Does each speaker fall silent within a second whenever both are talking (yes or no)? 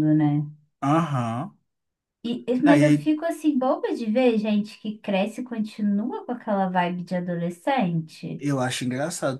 yes